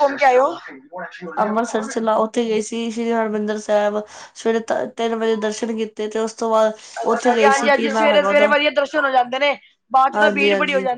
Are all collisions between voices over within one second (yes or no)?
no